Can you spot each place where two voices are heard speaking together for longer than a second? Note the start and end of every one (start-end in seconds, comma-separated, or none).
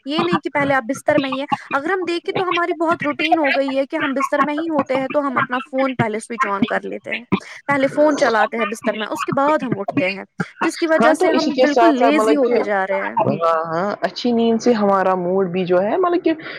11.0-12.6